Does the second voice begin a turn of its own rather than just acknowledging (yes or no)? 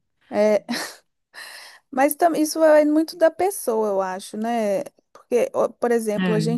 no